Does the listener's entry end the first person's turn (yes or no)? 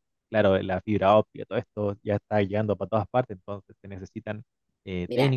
no